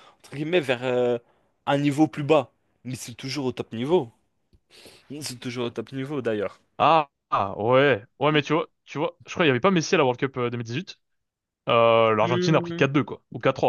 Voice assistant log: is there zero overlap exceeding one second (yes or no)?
yes